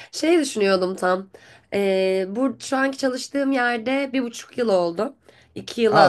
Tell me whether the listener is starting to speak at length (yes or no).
no